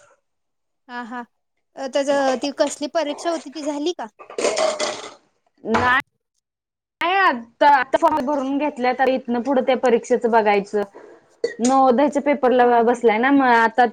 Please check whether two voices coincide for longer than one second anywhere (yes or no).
no